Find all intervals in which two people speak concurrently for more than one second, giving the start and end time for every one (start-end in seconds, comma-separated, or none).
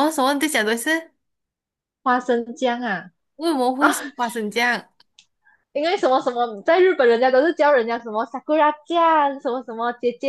none